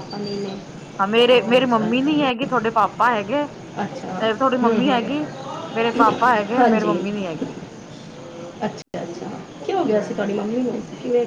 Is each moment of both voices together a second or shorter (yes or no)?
yes